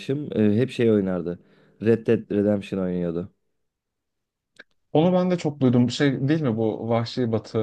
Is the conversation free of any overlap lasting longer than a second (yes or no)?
yes